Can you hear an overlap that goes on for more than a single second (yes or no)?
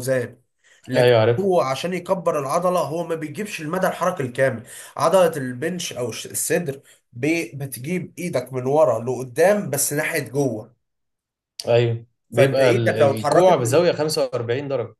yes